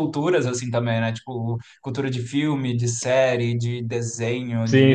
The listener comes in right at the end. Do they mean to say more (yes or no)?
yes